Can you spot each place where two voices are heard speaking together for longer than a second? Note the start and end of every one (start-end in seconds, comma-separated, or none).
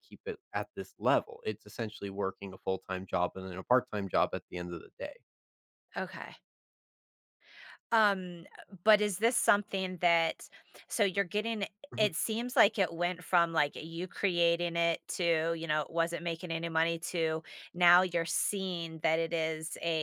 none